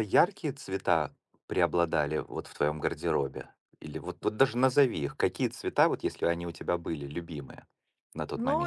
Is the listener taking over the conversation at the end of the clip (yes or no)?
yes